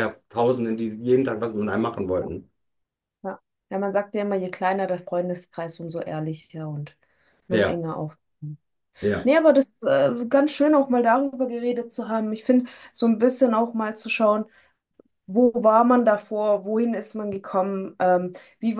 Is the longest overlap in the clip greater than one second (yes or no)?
no